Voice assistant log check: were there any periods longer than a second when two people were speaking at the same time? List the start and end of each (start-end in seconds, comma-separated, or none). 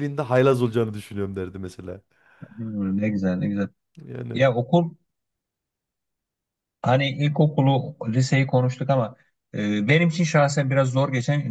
none